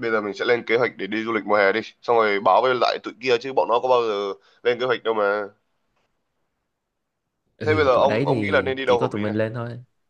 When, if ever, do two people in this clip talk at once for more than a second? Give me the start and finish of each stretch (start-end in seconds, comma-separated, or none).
7.6-9.4